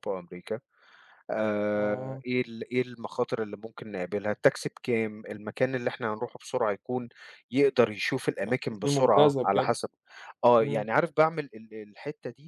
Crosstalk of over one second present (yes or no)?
yes